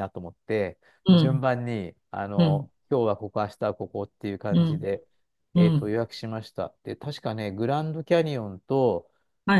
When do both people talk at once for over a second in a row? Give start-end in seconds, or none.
none